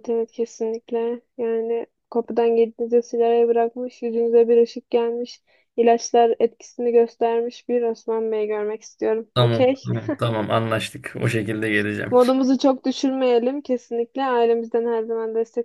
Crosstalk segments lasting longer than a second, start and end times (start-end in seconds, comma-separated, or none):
none